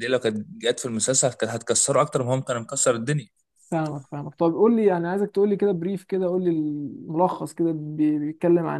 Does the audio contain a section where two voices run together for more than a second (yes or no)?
no